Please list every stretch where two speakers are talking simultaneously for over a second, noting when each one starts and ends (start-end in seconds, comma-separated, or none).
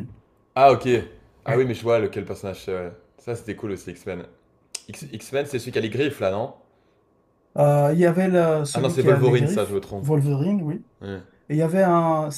8.7-10.1